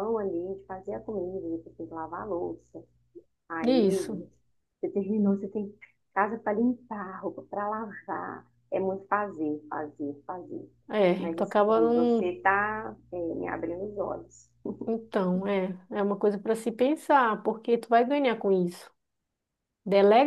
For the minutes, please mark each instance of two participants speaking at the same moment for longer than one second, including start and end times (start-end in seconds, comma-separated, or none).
11.2-12.4